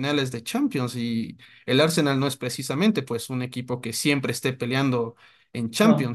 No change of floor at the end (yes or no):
yes